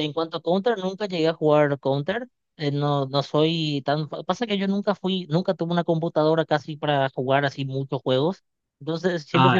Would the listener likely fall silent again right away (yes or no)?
yes